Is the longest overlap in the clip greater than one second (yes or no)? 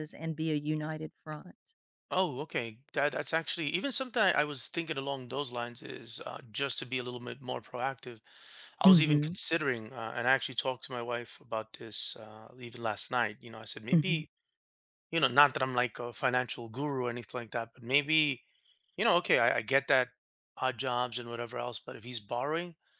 no